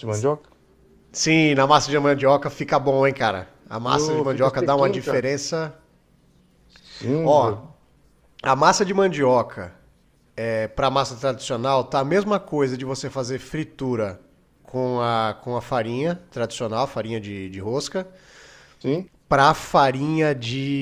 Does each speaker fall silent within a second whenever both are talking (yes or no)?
no